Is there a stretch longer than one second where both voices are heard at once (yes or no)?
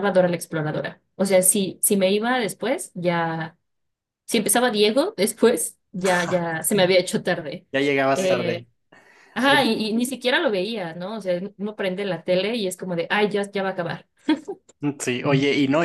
no